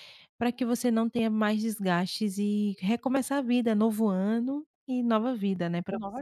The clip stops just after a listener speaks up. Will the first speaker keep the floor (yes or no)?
no